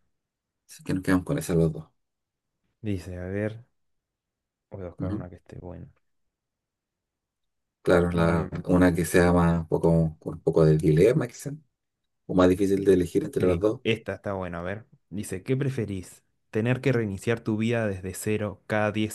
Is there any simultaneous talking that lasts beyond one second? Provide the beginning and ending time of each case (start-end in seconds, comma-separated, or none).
none